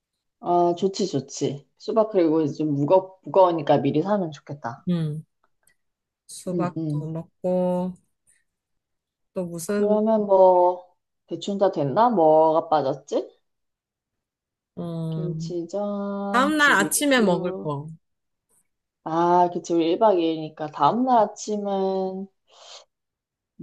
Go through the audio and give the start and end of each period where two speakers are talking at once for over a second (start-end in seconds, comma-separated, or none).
16.3-17.7